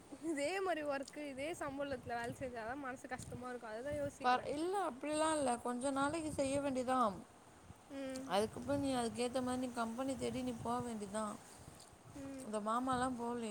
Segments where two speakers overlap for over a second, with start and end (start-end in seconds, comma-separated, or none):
none